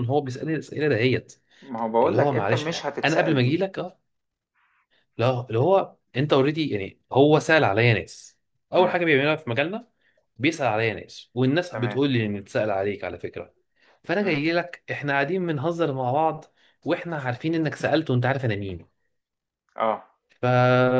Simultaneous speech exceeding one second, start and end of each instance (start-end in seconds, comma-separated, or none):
2.0-3.6